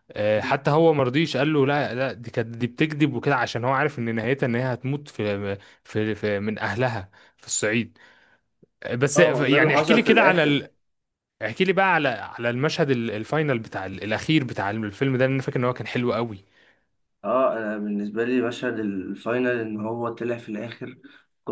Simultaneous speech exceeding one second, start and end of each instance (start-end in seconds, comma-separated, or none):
9.2-10.6